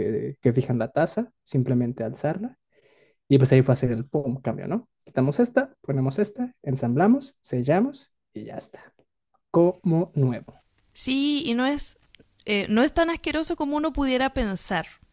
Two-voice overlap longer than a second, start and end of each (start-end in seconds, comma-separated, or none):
none